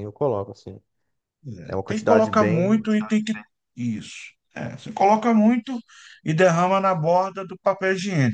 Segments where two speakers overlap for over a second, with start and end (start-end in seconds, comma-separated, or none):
1.7-2.9